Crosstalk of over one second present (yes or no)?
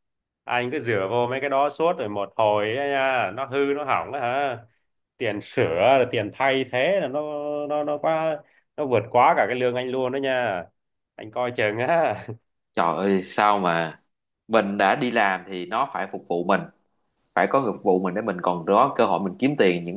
no